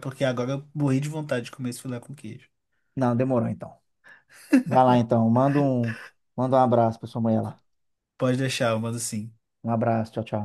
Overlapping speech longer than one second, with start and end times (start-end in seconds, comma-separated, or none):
none